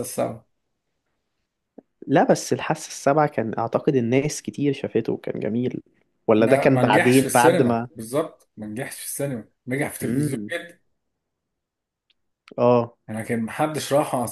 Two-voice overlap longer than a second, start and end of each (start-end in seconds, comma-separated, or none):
6.4-7.9